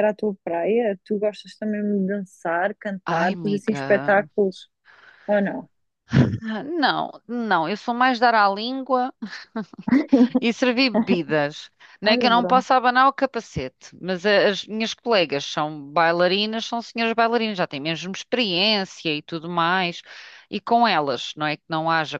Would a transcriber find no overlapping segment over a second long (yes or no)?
no